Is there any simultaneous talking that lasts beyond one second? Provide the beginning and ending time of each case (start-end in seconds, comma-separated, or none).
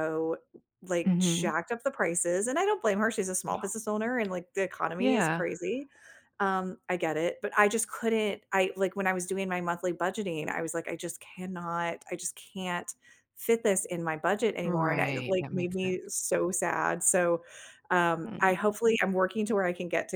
14.6-16.0